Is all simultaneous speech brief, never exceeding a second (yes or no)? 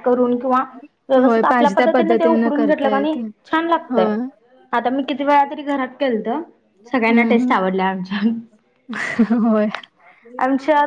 no